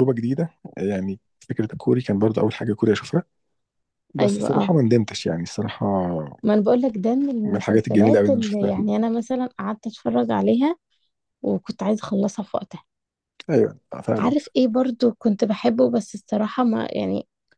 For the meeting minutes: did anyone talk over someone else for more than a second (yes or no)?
yes